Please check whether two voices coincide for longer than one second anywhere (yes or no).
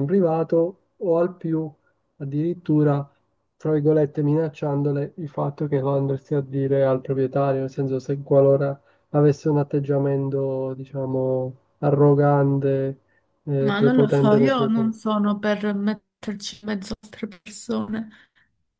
yes